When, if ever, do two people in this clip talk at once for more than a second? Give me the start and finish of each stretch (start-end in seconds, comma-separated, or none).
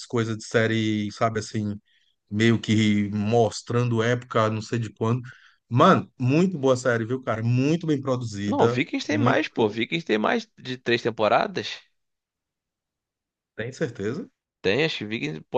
8.5-9.8